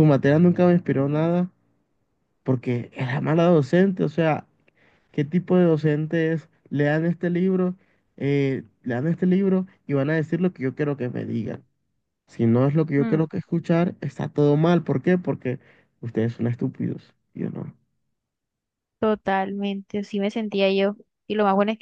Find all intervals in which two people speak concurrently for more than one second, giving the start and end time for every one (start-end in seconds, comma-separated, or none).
none